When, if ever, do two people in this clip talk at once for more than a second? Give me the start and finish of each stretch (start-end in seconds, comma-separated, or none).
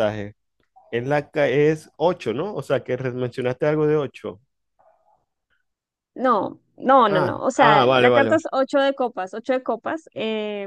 7.0-8.4